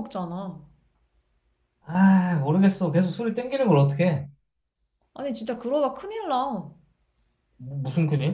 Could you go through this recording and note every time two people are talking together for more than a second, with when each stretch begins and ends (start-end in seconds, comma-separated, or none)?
none